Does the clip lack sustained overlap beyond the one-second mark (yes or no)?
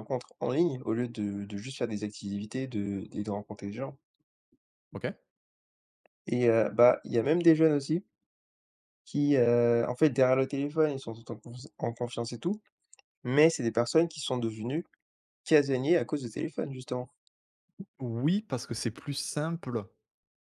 yes